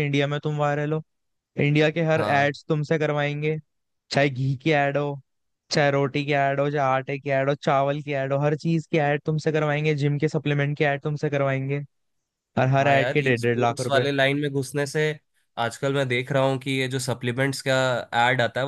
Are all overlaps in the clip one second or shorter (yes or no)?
no